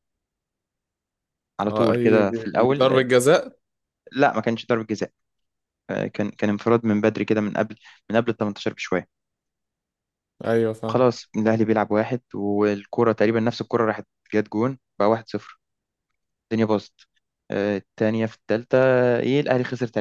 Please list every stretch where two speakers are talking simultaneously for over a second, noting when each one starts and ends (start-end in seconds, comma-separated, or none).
1.7-3.1